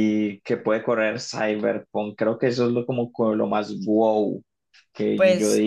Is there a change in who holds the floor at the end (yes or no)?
yes